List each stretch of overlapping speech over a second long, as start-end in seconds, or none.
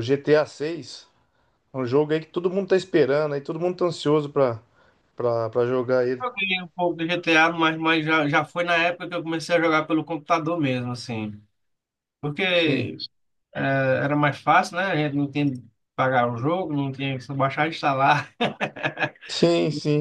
none